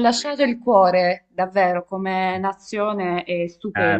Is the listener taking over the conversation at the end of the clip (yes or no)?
yes